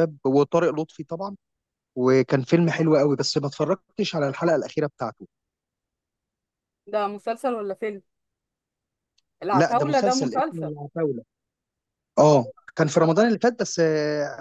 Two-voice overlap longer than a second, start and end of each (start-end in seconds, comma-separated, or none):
9.5-10.7